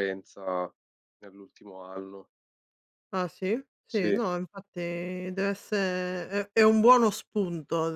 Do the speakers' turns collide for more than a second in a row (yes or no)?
no